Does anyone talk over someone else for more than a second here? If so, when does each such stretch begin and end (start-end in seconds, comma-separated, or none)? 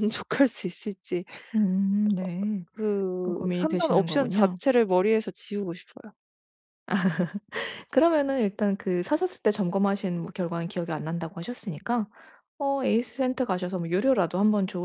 3.2-4.6